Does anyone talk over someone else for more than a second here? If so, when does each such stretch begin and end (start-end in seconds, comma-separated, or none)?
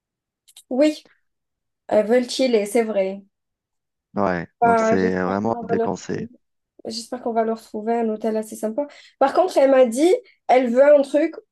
4.6-6.3